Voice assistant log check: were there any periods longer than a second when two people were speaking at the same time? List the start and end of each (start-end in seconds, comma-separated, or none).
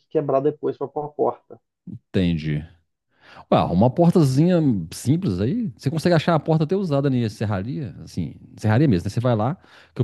none